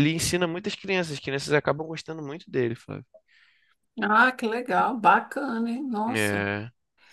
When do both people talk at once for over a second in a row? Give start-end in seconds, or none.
none